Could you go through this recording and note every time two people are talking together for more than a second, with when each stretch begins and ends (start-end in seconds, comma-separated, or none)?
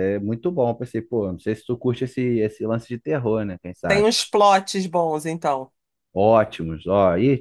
none